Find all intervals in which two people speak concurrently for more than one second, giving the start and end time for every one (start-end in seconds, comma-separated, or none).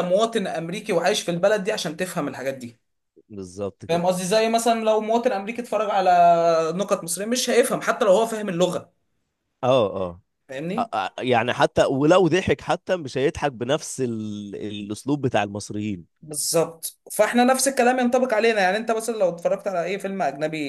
none